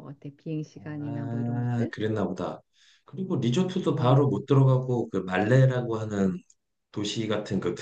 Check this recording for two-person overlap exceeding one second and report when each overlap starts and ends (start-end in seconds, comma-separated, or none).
0.7-1.9